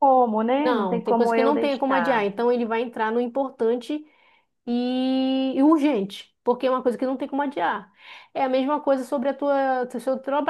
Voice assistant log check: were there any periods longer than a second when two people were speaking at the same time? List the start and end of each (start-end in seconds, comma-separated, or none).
0.6-2.3